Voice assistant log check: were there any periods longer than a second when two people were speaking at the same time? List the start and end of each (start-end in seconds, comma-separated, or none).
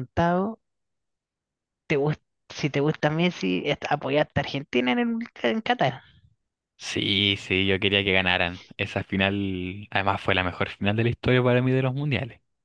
none